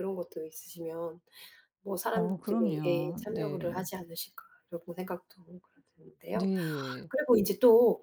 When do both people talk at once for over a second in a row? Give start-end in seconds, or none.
2.1-3.9